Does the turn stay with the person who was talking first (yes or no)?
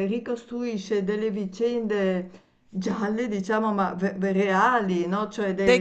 no